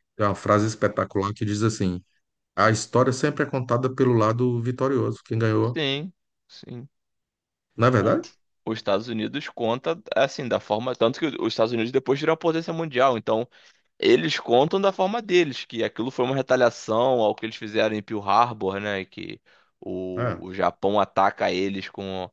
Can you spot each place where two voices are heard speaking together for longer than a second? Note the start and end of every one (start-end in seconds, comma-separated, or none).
none